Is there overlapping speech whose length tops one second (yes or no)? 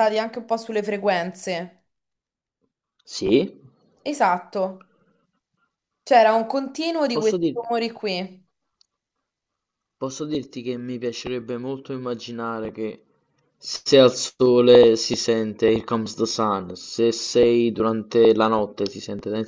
no